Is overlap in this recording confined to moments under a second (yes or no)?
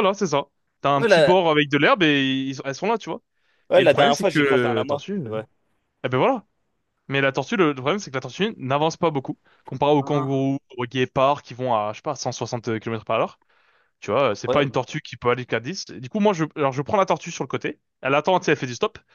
no